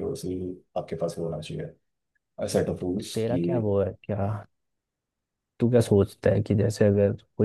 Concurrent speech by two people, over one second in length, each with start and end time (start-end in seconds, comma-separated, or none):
none